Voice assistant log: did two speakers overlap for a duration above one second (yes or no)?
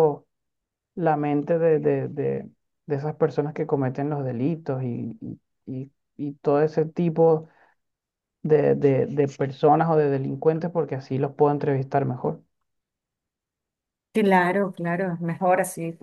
no